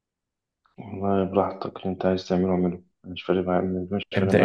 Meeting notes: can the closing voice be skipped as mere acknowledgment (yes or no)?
no